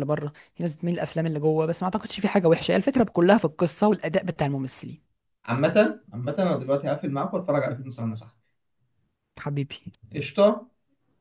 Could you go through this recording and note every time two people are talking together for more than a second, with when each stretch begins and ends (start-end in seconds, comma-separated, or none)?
none